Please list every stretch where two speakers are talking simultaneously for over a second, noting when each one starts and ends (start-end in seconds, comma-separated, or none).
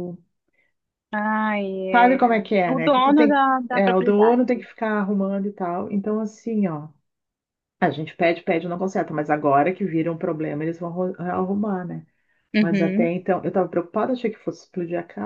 1.9-4.6